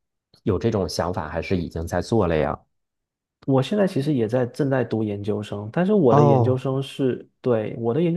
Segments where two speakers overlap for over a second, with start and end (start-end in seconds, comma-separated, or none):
none